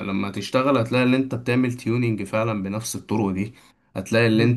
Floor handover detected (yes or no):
no